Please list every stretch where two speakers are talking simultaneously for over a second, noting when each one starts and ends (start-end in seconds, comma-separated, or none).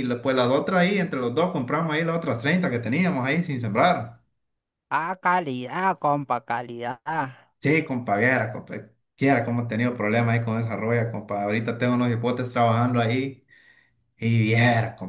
none